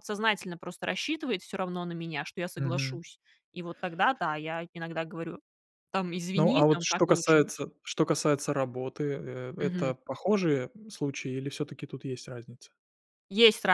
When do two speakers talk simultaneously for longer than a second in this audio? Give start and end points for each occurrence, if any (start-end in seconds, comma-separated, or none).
6.3-7.6